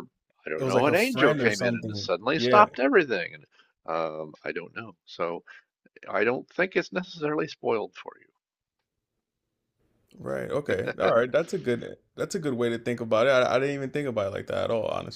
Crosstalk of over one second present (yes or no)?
yes